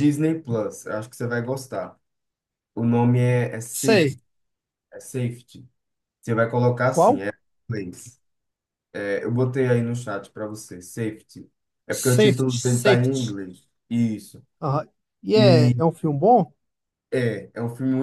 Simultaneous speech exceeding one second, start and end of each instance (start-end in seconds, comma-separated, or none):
11.9-13.3